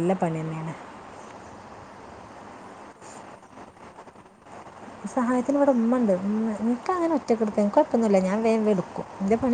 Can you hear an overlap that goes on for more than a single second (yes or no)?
no